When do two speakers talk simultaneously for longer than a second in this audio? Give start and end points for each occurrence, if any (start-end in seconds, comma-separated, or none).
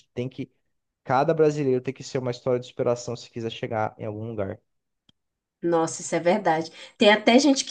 none